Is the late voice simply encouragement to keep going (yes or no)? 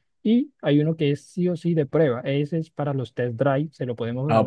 no